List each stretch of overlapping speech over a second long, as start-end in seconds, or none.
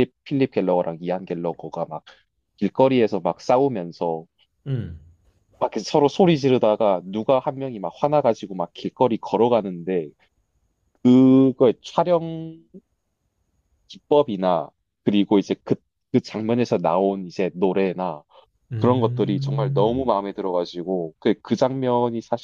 18.8-20.1